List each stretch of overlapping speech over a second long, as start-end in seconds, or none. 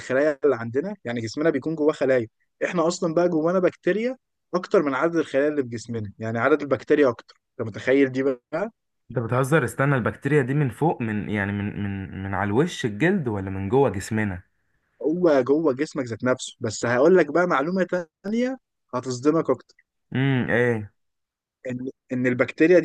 none